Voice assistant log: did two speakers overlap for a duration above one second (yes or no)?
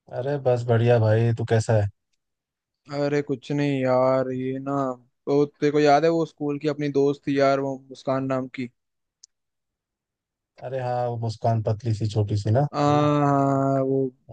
no